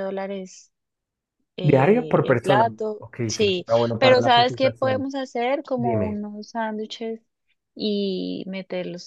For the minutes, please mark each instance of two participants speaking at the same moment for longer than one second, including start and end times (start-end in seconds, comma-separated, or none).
1.6-5.1